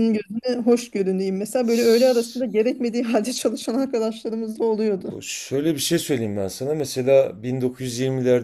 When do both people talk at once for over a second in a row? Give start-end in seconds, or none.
none